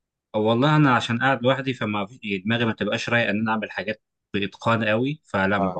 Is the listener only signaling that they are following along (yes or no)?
yes